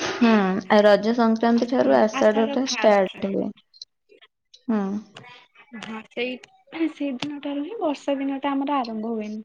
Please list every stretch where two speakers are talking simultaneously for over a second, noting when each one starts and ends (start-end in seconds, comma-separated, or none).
1.6-3.4